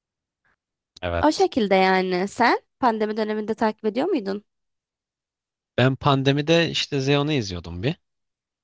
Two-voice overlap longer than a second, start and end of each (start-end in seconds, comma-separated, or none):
none